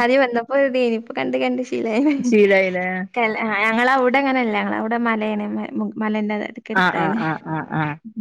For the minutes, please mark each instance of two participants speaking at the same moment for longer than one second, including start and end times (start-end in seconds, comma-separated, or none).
none